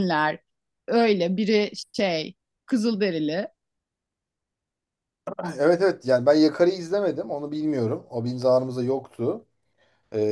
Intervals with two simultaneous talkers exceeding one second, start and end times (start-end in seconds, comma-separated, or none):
none